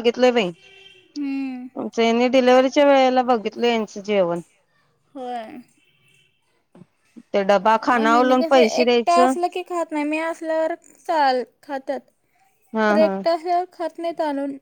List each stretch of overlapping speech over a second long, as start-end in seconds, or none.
7.9-9.3